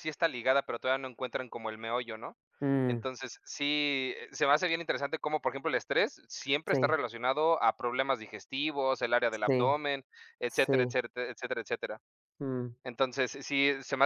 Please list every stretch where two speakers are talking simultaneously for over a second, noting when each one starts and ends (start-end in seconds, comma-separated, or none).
none